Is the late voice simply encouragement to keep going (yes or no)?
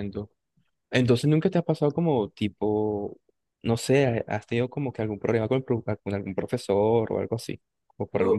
no